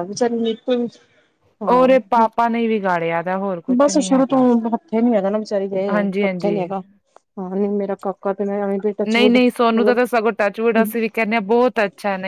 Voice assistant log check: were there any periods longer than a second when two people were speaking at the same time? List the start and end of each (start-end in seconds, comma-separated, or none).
none